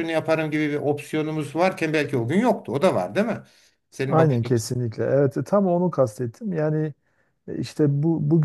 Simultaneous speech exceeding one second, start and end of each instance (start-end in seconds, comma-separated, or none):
none